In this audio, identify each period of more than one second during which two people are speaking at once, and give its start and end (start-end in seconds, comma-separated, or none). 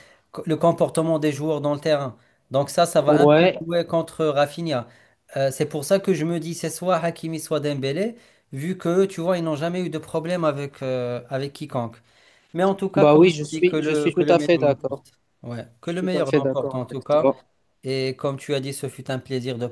13.0-15.0, 15.8-17.3